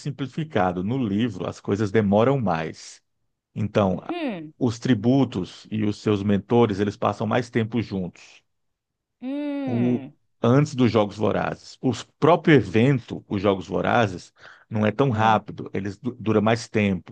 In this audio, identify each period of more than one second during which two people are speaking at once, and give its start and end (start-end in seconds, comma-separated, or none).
none